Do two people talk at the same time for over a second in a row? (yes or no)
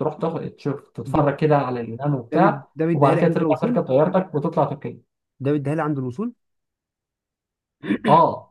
yes